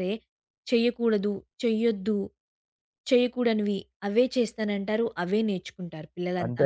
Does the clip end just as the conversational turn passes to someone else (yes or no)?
yes